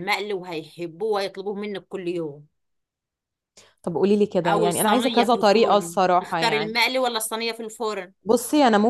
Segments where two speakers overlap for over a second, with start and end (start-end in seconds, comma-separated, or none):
4.5-6.8